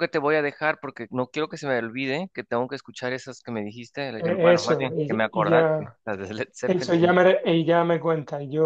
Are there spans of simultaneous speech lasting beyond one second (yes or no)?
yes